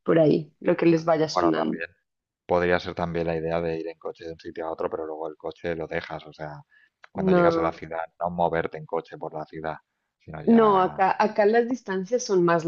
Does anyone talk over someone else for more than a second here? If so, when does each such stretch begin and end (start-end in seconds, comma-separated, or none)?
none